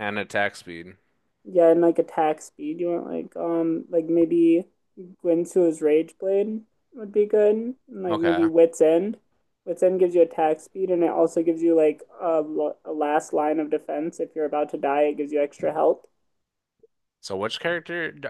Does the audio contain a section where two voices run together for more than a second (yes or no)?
no